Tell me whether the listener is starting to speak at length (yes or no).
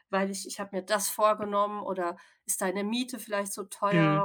yes